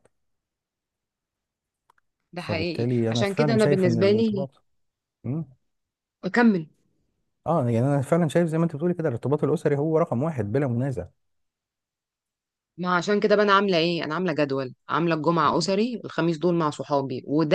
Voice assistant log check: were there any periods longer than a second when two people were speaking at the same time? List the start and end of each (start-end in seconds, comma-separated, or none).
2.4-4.5